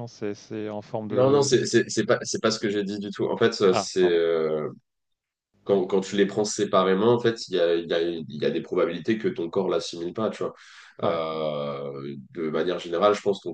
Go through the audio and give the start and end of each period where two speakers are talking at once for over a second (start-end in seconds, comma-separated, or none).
none